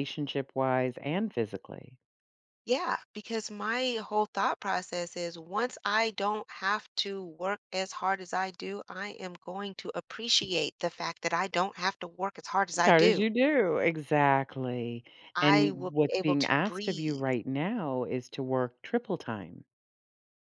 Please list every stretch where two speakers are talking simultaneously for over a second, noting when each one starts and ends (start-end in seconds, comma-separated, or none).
15.4-17.2